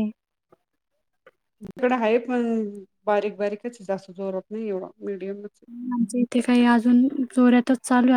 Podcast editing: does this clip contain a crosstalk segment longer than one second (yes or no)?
no